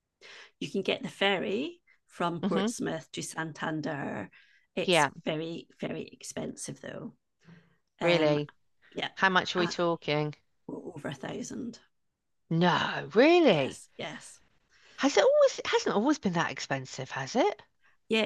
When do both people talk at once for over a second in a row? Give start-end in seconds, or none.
none